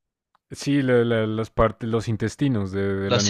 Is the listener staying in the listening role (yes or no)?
no